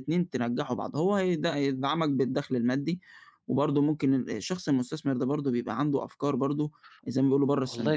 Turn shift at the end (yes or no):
yes